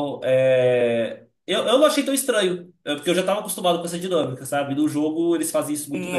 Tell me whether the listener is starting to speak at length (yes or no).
yes